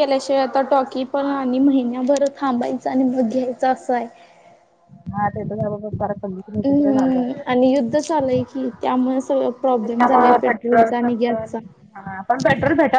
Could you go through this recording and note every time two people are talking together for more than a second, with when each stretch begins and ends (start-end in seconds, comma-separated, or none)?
none